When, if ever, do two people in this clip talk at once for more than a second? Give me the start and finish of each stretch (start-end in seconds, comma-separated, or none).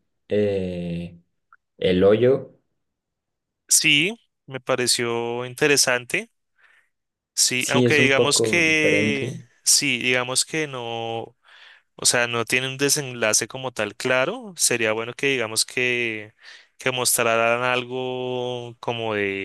7.6-9.4